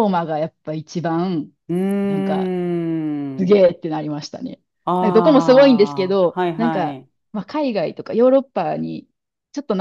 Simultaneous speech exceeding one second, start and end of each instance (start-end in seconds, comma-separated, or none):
5.0-7.1